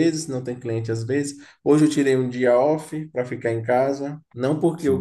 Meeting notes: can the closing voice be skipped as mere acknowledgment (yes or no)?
yes